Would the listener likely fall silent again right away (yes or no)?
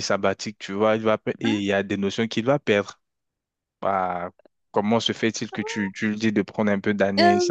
no